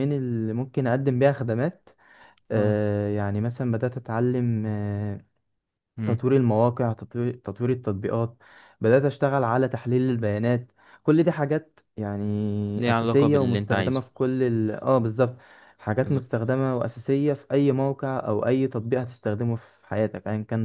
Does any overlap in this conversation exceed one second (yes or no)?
yes